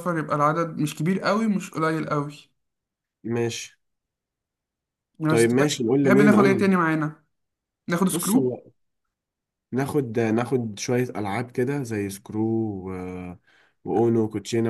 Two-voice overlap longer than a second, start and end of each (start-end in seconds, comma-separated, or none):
5.3-6.6